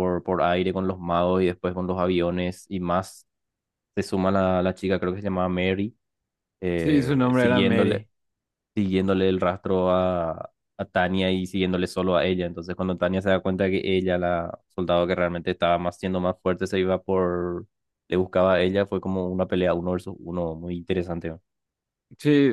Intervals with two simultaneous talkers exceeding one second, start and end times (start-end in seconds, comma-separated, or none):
6.8-8.1